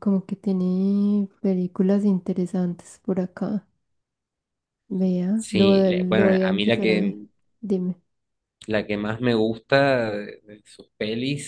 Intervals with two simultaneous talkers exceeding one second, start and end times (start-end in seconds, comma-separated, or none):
5.3-7.2